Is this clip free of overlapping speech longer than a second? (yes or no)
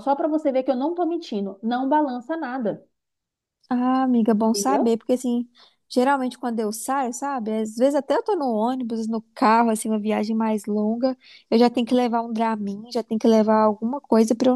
yes